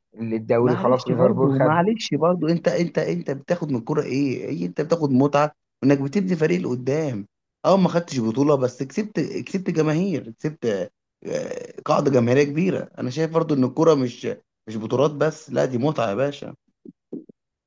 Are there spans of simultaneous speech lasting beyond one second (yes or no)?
yes